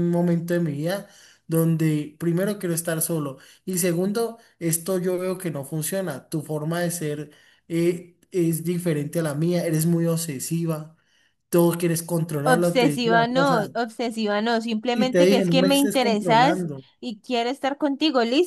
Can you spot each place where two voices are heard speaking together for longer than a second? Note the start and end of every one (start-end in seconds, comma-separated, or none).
12.4-13.7, 14.9-16.8